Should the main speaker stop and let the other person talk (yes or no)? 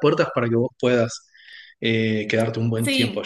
yes